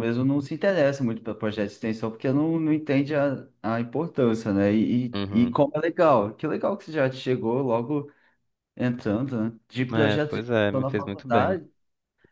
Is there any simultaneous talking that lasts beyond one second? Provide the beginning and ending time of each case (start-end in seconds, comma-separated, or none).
9.9-11.6